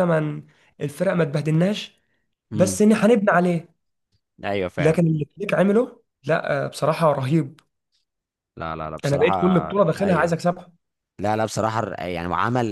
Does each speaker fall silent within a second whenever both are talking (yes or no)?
no